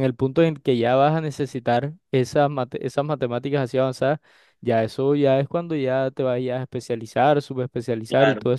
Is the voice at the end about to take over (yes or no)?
no